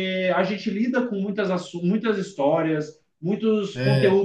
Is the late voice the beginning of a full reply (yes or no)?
no